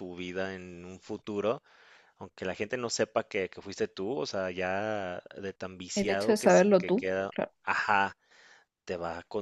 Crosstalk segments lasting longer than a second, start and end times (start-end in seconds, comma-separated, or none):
5.9-7.5